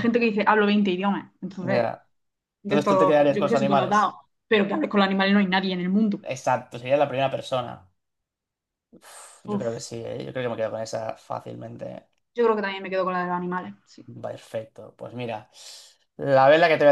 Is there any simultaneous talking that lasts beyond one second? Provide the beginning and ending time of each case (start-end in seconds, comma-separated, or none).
2.6-4.2